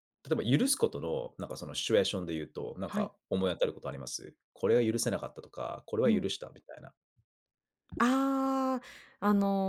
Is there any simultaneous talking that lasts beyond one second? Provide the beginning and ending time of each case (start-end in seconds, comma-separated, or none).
none